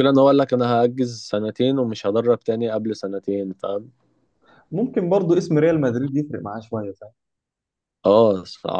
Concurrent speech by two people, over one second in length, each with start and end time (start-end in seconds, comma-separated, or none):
none